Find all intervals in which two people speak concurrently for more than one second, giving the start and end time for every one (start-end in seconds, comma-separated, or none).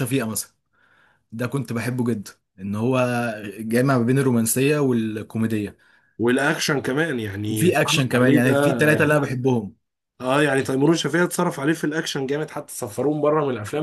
7.5-8.8